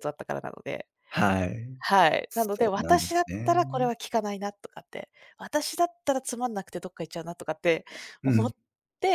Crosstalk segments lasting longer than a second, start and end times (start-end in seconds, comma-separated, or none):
2.3-3.8